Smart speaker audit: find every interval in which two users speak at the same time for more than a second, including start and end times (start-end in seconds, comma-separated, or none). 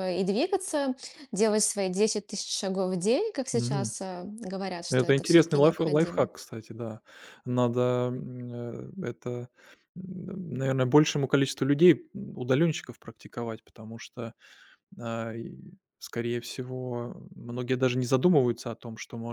4.9-6.3